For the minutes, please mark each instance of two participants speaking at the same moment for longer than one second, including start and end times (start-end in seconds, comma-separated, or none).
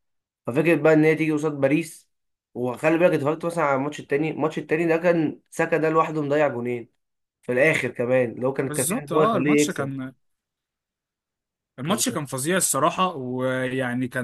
8.7-9.9